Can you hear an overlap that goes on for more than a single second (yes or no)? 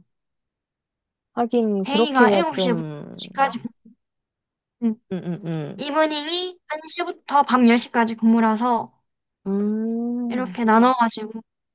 yes